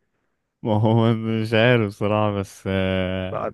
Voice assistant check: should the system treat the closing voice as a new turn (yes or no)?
no